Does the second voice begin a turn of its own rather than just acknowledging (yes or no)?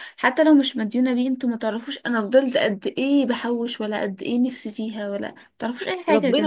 yes